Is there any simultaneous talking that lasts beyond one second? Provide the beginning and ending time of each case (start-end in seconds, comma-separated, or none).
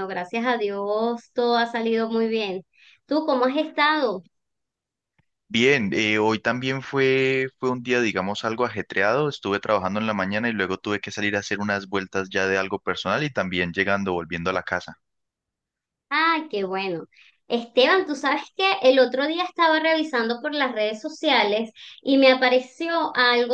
none